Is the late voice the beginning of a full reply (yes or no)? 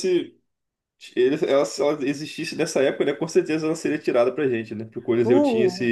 no